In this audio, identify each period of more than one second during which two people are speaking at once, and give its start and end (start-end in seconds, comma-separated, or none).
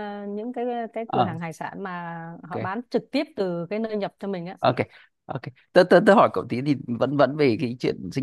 none